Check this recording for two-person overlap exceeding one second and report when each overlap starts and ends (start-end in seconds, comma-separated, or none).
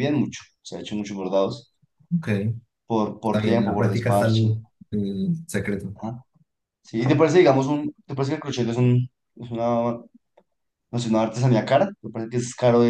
3.2-4.5